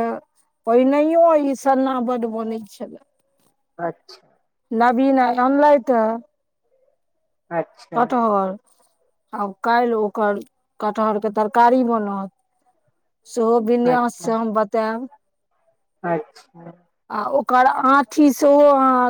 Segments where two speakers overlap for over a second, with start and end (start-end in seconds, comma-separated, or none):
none